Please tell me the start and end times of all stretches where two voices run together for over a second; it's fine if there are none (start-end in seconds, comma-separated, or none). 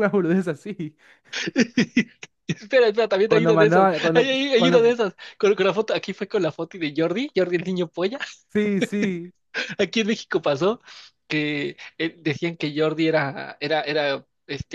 3.3-5.0